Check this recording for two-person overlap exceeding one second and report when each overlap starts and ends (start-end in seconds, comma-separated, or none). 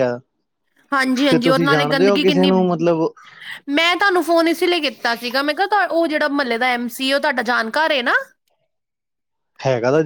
1.3-2.5